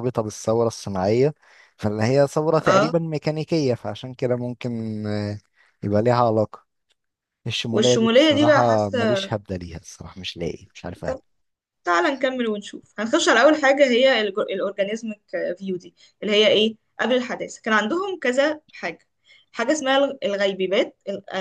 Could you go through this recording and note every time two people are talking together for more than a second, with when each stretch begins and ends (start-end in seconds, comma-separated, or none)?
7.7-9.3